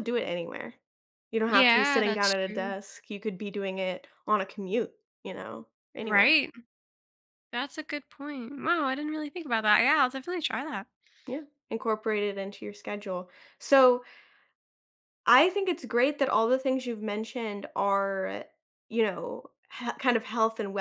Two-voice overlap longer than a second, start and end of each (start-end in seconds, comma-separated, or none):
1.5-2.8